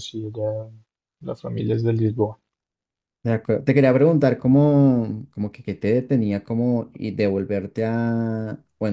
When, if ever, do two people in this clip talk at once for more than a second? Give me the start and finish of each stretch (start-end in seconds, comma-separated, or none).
none